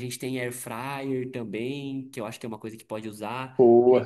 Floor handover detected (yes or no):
no